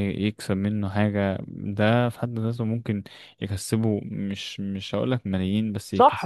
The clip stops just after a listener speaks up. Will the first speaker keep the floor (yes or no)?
no